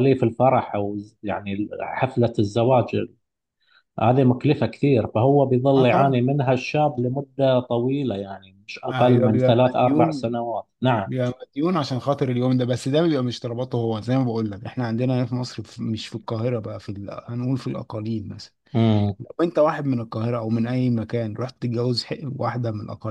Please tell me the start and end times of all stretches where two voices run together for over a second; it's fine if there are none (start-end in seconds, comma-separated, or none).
8.9-10.2